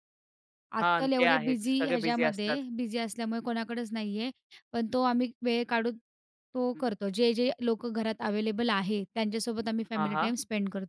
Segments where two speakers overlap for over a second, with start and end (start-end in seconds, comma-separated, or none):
0.8-2.6